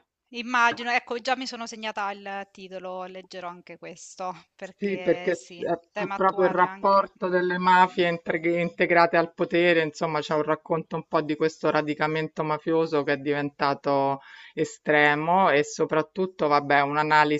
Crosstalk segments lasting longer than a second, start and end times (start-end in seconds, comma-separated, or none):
4.8-7.1